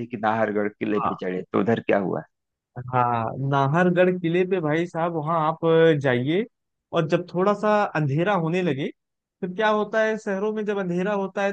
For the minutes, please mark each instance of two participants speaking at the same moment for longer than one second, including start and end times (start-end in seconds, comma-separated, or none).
none